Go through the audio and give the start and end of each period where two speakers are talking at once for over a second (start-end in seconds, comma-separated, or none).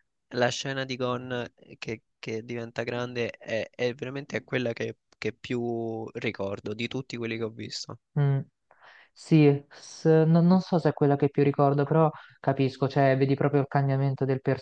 none